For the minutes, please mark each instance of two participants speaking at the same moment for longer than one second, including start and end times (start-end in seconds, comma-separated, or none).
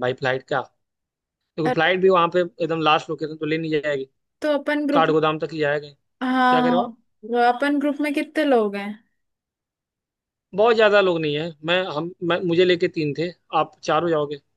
none